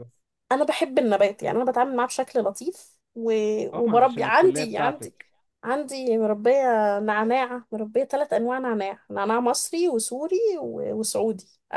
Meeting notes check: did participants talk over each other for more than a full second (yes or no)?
yes